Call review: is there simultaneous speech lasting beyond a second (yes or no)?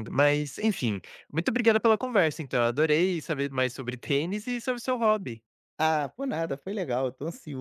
no